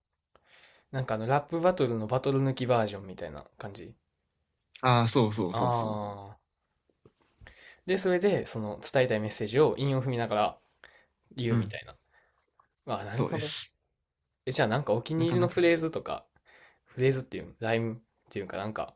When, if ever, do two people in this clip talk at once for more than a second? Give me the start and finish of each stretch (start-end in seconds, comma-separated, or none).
none